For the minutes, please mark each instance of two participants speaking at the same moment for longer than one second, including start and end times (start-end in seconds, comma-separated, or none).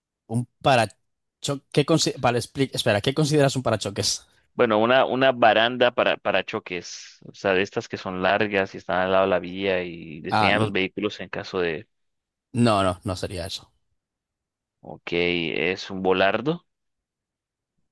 none